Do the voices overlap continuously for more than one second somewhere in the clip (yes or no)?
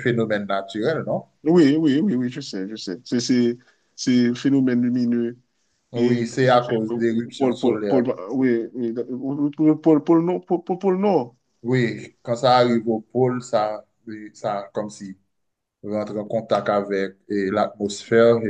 yes